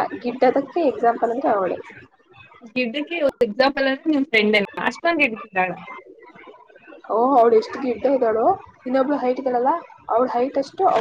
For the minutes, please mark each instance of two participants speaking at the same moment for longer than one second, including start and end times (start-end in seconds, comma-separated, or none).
none